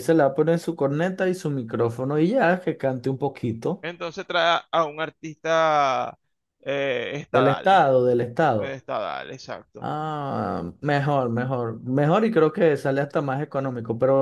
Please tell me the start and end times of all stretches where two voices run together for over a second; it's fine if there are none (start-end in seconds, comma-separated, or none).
none